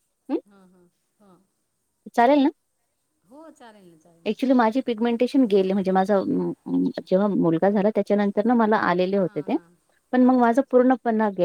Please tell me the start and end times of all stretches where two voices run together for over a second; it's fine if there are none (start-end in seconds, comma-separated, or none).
none